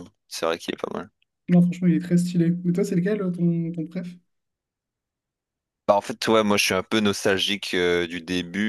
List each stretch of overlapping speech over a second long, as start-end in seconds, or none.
none